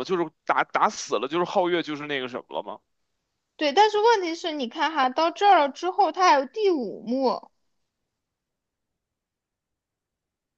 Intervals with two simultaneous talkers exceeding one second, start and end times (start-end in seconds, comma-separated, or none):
none